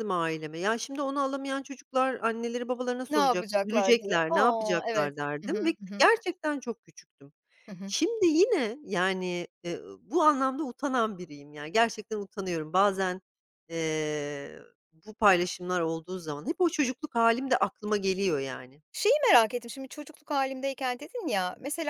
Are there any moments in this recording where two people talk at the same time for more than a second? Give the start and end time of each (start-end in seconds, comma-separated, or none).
3.1-6.1